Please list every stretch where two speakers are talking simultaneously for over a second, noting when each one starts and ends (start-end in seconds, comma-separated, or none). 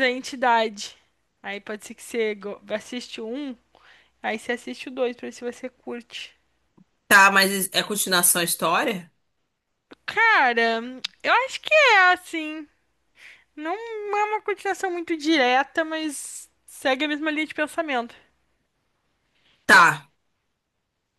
none